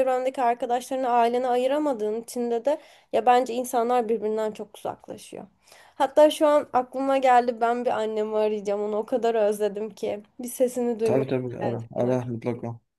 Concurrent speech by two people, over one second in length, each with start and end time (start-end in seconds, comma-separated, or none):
11.0-12.3